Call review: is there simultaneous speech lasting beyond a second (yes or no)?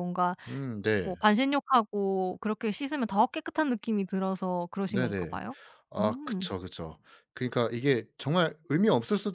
no